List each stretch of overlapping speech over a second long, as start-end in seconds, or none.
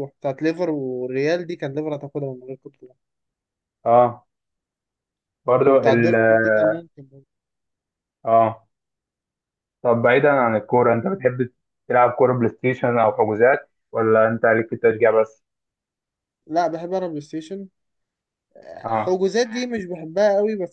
none